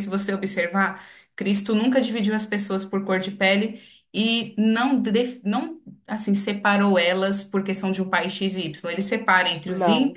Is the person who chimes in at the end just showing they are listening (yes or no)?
yes